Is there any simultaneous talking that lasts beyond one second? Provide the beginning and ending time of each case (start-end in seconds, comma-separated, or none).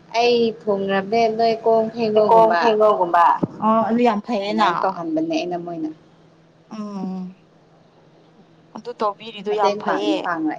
none